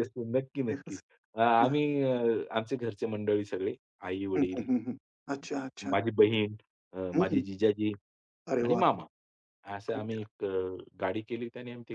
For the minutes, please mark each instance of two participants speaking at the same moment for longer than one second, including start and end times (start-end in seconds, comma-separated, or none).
none